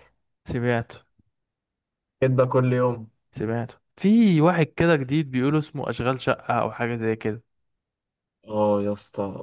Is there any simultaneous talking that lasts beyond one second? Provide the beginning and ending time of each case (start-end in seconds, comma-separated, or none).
none